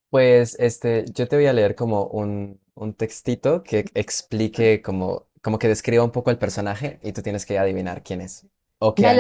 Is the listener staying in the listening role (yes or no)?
no